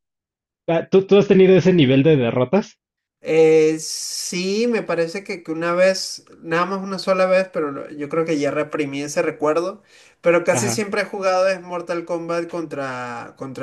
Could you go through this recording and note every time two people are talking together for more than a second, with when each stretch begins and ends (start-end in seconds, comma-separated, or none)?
none